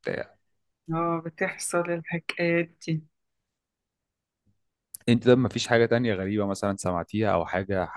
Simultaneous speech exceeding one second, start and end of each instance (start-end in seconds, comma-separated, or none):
none